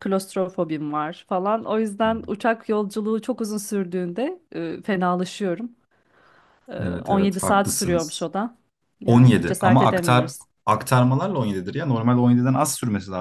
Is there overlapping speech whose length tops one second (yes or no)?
yes